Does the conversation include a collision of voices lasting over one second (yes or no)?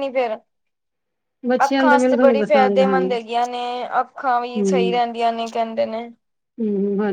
yes